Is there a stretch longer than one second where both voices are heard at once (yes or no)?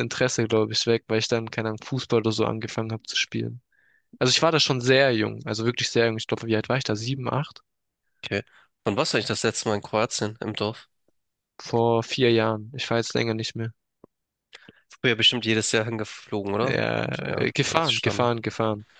yes